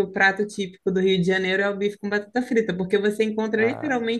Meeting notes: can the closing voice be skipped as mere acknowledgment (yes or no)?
yes